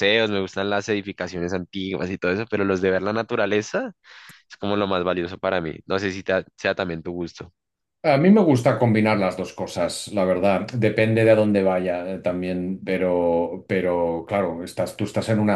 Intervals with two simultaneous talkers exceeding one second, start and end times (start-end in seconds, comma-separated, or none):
none